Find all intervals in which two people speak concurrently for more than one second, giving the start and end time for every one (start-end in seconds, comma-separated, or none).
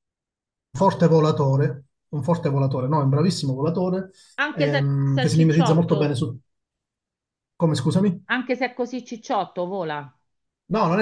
4.5-6.2